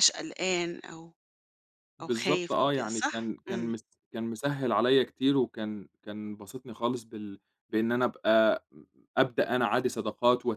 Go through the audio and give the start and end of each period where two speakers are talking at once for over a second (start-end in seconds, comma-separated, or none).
2.0-3.7